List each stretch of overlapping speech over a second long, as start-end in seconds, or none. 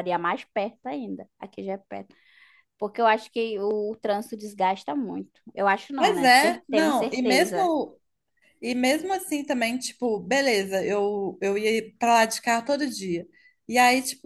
6.0-7.7